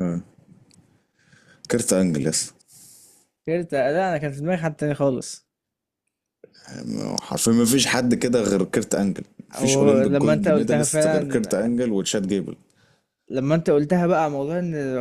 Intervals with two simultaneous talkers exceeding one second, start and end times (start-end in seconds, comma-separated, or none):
9.5-11.6